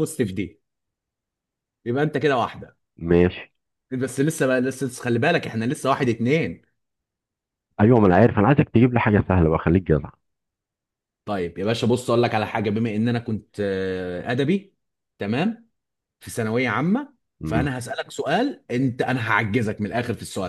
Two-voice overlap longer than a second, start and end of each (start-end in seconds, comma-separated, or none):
none